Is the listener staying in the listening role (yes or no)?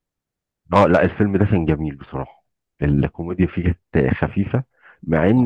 yes